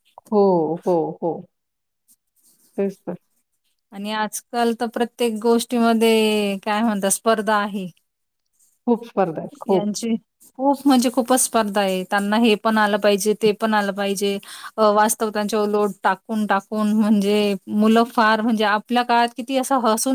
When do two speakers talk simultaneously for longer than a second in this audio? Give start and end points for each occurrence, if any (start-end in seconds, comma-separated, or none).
none